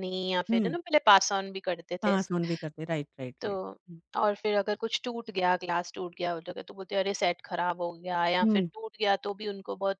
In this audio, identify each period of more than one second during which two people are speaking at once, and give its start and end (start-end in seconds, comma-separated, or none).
none